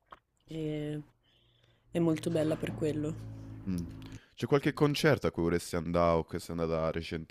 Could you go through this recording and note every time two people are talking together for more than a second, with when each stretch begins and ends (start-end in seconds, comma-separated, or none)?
none